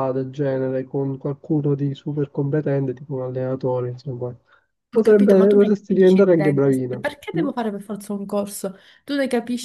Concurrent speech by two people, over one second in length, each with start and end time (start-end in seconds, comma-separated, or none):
5.0-7.5